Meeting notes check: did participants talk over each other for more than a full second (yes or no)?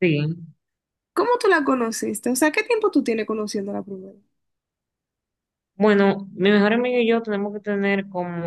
no